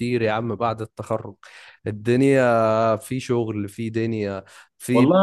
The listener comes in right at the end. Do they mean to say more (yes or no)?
yes